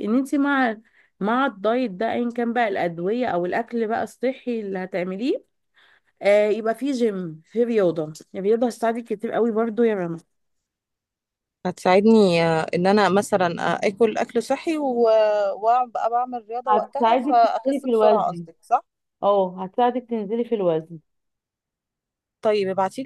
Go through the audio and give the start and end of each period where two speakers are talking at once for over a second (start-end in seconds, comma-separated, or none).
16.7-18.4